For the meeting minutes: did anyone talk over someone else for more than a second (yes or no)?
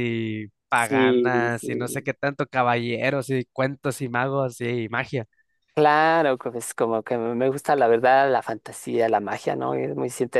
yes